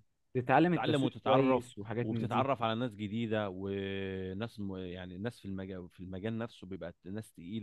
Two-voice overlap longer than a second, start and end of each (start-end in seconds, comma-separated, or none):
0.7-2.5